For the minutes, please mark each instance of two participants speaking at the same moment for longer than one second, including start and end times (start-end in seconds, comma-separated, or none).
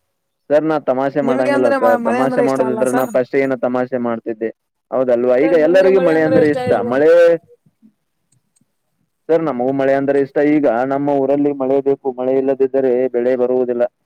1.3-3.1